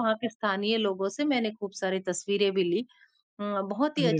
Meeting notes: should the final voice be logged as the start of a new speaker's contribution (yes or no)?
no